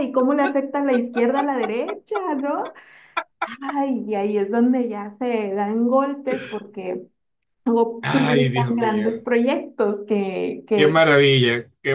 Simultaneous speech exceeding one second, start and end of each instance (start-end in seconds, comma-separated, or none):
8.0-9.2